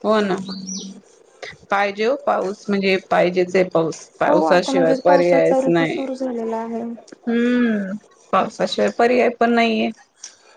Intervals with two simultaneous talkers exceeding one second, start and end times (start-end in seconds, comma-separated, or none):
4.3-6.0